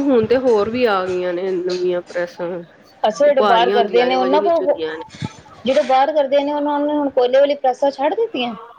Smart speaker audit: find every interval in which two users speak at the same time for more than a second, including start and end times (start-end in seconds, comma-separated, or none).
3.4-4.8